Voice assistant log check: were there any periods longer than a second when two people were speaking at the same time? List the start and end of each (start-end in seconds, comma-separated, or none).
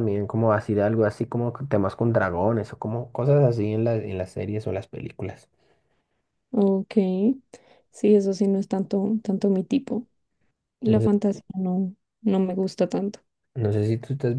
none